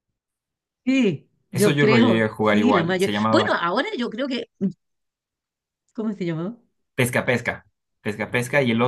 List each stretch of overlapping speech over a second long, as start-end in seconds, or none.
1.5-3.6